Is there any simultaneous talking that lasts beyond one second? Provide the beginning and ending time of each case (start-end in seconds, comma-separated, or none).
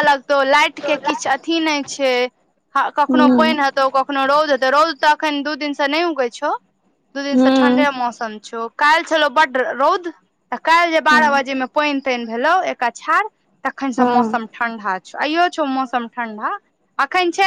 none